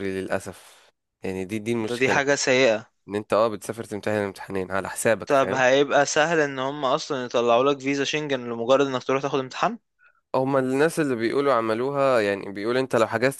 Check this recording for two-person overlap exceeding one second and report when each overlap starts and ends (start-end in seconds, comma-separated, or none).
none